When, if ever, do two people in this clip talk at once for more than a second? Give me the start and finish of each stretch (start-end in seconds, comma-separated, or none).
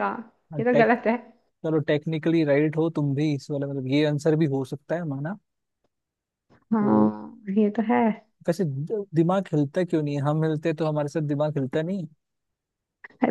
none